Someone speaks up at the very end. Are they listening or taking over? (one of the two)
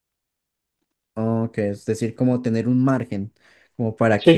taking over